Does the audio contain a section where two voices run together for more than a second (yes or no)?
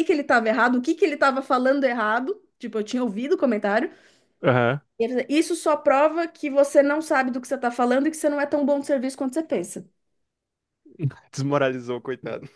no